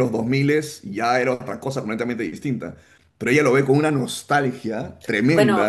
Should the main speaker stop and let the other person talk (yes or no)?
yes